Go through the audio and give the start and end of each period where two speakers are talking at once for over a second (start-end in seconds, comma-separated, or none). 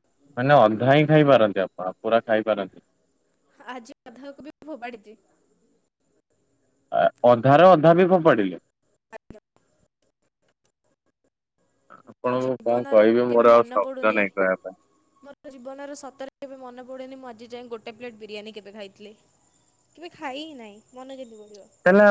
12.1-14.2